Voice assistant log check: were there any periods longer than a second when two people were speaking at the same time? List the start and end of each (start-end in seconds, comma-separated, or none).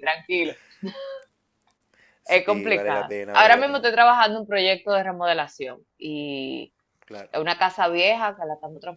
2.2-3.9